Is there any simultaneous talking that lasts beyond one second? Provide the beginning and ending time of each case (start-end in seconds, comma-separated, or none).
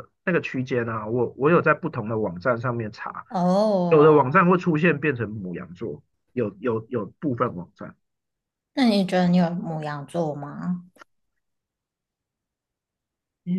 none